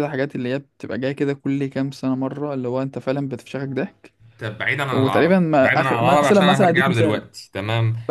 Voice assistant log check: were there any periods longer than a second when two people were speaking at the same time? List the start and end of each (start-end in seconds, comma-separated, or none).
4.9-7.2